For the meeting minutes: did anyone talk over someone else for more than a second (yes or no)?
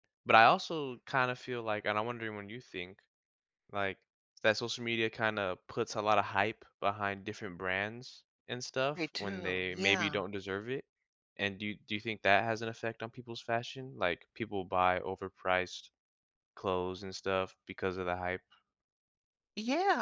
yes